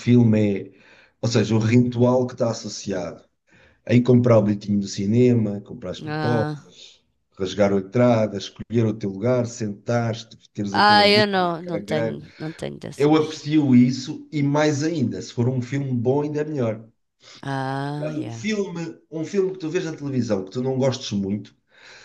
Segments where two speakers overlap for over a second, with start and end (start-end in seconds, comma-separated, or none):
10.7-12.2